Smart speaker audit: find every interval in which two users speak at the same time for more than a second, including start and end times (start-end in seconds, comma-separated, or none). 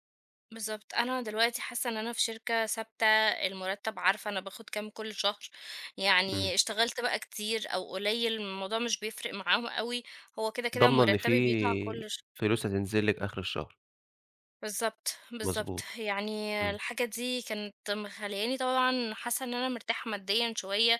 10.8-12.2